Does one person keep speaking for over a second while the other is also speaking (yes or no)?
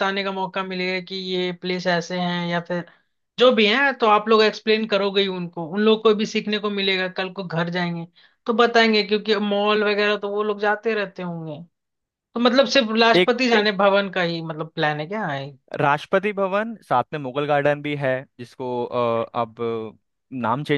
no